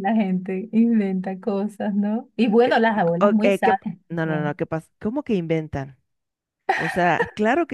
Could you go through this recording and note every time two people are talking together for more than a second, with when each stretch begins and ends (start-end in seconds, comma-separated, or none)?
3.2-4.6